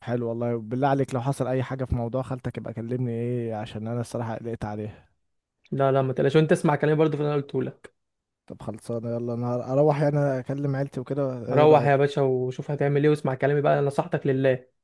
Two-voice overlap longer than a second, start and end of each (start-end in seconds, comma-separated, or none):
none